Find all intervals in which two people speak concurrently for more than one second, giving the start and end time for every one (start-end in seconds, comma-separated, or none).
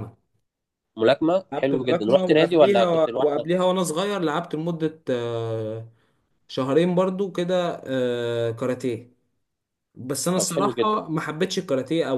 1.5-3.5